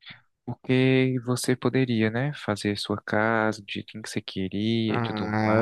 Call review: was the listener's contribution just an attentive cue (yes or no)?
no